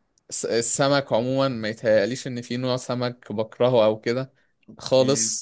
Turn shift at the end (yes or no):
no